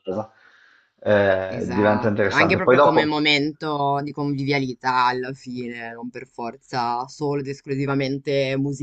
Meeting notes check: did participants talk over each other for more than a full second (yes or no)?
yes